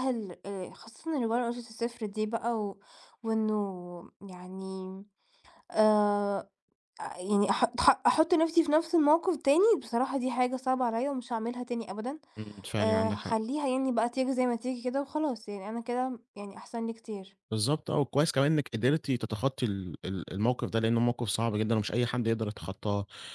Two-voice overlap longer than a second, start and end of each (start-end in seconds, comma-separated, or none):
none